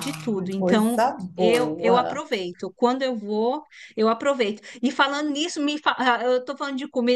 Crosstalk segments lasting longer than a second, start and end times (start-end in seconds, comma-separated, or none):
0.6-2.2